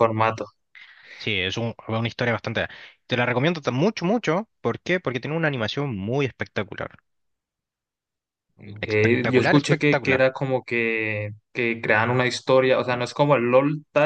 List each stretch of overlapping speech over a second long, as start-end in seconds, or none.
8.8-10.3